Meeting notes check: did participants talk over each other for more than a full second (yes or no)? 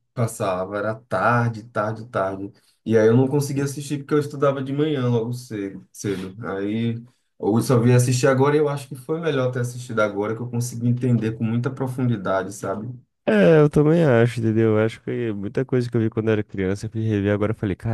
no